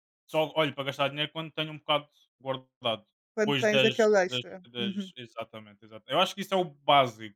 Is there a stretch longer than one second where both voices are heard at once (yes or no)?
yes